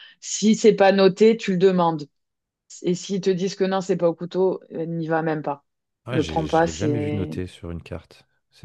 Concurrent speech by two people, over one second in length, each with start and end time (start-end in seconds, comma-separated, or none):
6.1-7.3